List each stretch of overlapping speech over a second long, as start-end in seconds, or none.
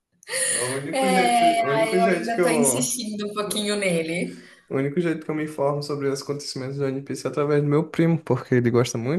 0.9-2.9